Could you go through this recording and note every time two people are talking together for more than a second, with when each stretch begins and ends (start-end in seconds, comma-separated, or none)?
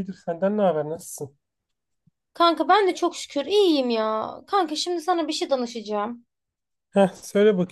none